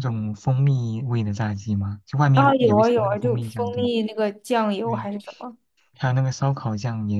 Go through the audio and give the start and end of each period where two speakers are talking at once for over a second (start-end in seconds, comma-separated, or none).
2.3-3.9